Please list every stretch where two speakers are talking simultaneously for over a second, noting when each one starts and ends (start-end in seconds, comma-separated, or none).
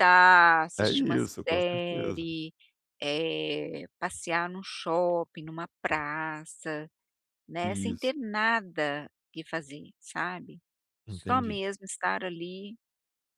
0.8-2.3